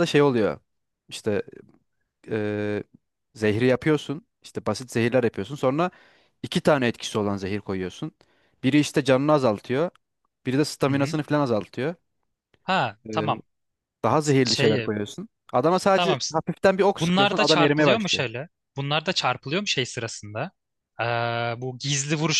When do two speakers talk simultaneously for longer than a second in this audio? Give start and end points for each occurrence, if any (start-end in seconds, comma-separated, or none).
16.9-18.2